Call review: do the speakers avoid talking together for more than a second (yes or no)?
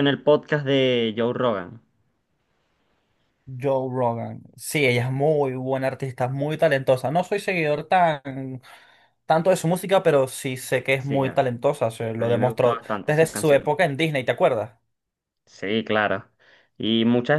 no